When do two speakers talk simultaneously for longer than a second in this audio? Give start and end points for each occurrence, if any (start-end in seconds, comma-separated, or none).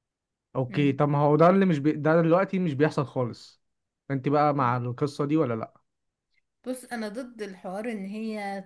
none